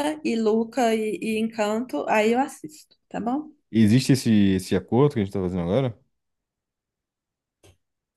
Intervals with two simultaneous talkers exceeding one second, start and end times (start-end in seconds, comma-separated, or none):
none